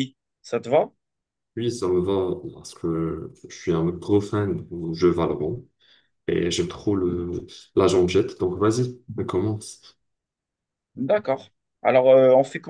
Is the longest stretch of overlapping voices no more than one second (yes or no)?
yes